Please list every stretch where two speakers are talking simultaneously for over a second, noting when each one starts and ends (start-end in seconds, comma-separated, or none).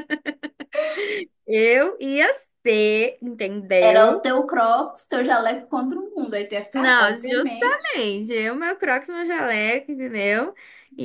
6.7-8.0